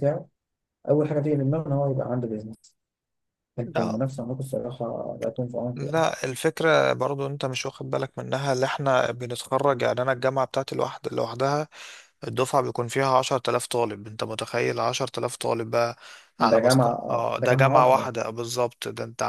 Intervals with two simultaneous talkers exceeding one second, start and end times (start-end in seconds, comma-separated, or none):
16.4-18.1